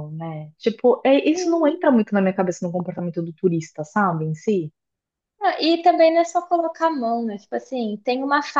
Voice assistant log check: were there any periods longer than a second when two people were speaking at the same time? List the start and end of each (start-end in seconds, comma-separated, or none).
none